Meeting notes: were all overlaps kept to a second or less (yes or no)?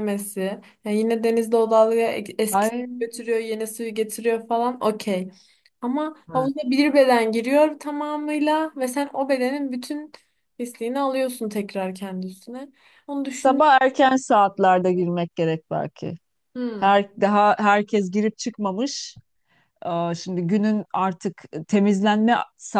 yes